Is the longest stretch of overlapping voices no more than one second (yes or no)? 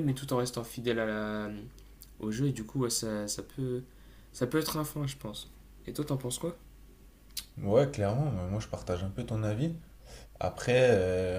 yes